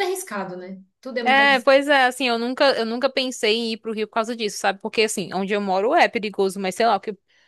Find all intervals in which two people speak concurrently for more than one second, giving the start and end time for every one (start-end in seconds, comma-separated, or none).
none